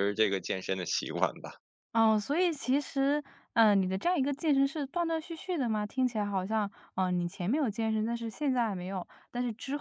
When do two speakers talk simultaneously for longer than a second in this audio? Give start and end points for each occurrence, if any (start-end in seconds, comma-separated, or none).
none